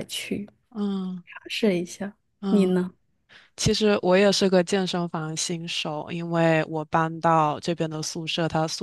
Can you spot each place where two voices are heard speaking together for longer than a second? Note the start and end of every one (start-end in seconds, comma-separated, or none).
none